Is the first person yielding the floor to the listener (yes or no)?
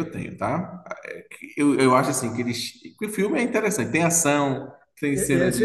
yes